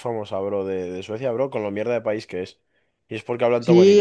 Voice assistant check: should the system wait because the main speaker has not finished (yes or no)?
no